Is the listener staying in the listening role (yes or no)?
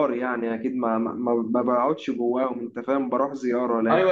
no